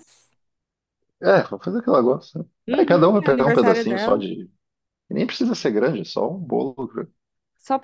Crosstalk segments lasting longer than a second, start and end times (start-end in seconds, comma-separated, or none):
2.7-4.2